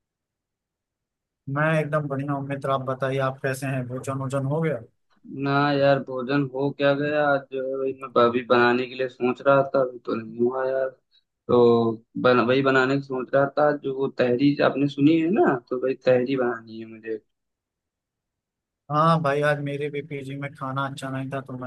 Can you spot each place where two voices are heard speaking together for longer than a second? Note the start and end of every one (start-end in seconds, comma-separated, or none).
none